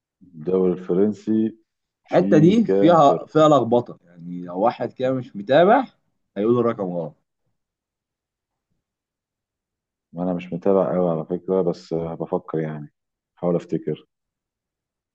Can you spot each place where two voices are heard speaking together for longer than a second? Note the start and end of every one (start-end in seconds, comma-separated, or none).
2.1-3.4